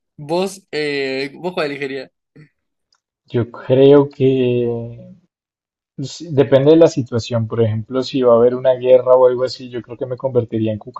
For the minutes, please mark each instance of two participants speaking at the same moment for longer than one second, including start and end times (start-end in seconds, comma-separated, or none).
none